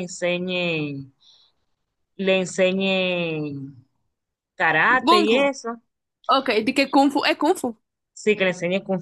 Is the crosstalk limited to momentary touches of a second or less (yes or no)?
yes